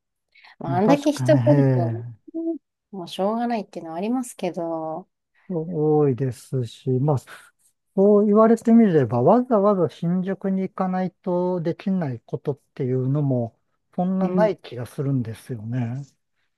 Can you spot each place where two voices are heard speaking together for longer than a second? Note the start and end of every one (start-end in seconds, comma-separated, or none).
0.7-2.0